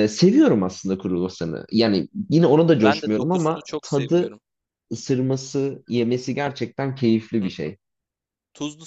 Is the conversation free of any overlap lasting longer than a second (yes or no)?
no